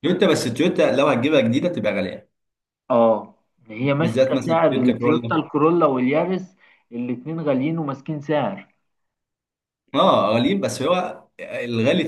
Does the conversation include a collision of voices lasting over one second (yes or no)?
yes